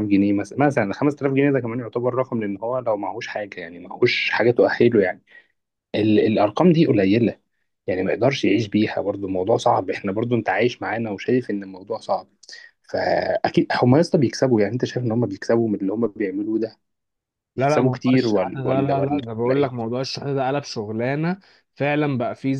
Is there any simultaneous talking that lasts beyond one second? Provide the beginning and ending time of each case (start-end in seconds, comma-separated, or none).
17.6-19.8